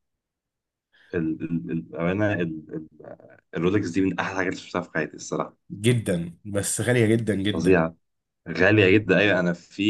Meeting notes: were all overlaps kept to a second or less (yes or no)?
yes